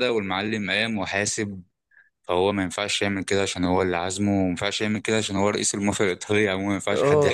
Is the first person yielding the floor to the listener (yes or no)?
yes